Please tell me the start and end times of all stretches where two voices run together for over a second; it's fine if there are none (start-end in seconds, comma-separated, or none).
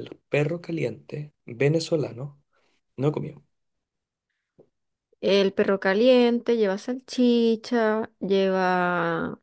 none